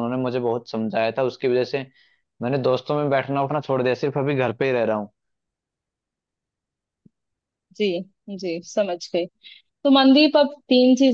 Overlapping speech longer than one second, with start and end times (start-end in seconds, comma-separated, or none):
none